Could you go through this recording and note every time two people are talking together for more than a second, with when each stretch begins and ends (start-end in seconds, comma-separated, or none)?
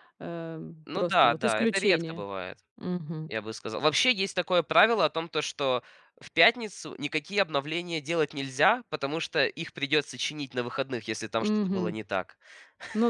0.8-2.2